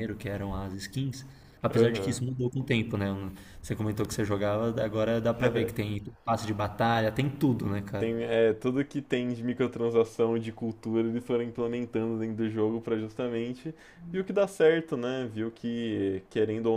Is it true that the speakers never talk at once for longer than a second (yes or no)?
yes